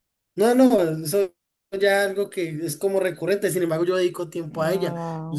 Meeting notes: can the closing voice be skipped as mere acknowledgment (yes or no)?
no